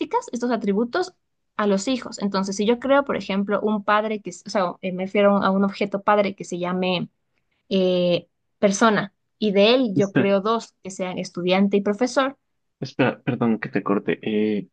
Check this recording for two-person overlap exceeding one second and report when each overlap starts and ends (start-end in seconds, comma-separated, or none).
none